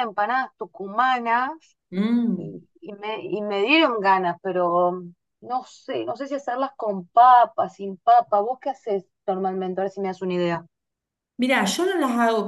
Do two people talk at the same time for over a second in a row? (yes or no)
no